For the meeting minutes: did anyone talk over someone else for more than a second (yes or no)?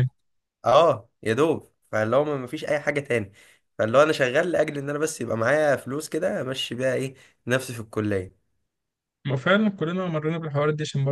no